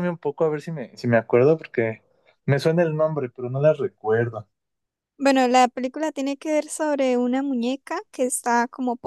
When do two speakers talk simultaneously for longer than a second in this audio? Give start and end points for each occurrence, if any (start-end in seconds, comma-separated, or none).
none